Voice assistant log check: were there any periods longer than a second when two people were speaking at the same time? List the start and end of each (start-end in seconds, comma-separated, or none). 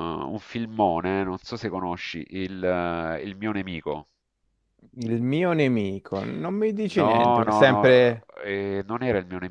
6.9-8.3